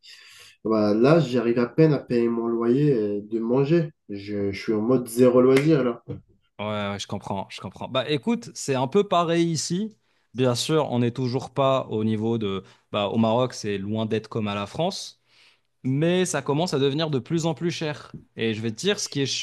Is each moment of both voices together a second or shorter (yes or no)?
yes